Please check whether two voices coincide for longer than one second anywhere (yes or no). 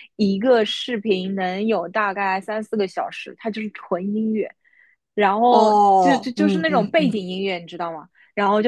yes